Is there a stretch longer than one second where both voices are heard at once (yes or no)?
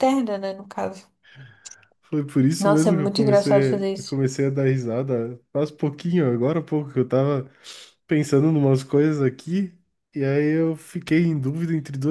yes